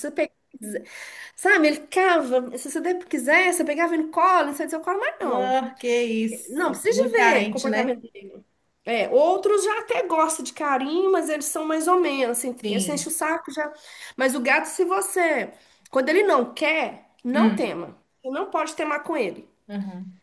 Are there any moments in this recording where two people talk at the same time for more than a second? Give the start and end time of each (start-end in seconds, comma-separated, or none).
6.5-8.0